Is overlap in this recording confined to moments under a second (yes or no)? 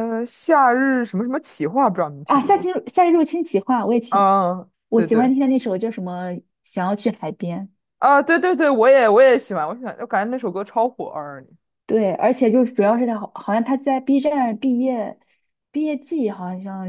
yes